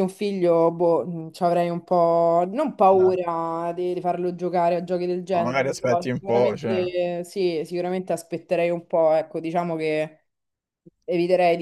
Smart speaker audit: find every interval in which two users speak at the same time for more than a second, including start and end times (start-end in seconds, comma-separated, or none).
5.3-6.8